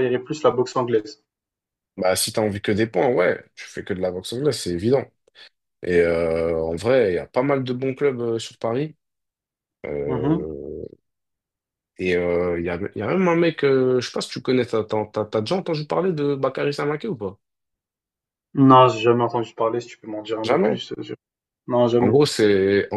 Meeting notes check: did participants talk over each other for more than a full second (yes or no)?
no